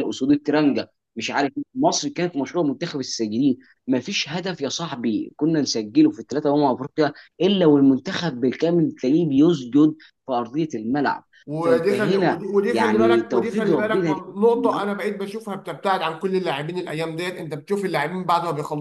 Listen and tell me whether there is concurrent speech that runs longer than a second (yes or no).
yes